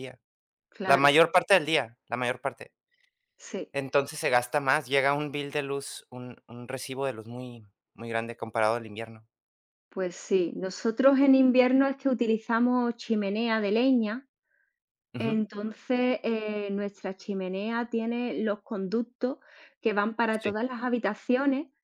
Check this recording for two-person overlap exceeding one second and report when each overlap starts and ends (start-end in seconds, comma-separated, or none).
none